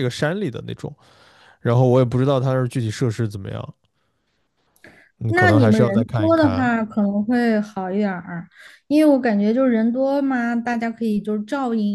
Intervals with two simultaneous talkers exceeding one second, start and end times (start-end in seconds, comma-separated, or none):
5.3-6.7